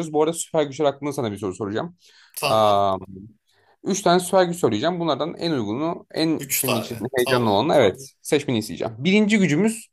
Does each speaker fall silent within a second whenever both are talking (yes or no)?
no